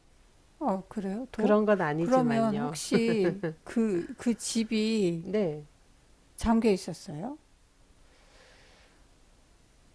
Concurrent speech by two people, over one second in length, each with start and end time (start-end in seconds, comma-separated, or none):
1.3-2.8